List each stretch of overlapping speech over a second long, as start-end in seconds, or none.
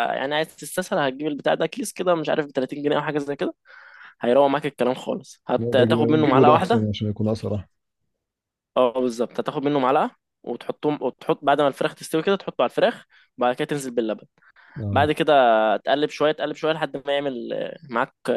5.6-6.9